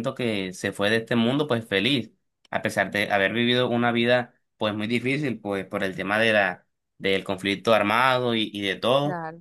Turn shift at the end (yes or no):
no